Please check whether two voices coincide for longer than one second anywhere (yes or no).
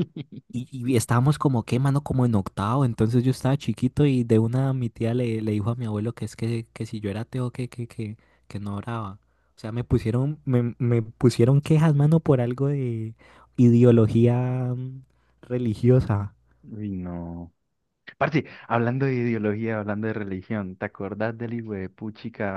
no